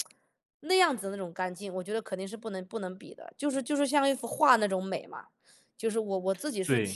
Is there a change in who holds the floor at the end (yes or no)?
yes